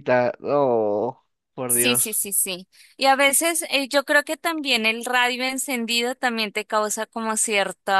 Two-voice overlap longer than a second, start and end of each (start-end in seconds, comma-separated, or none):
none